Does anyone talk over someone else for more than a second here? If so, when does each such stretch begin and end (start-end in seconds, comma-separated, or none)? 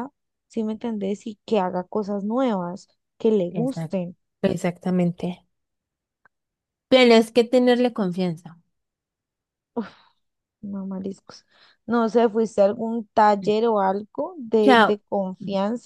none